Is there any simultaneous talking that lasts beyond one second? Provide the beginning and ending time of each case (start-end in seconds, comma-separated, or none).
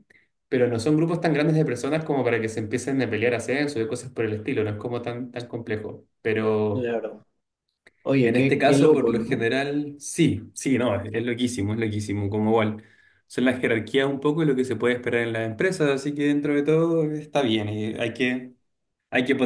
8.2-9.5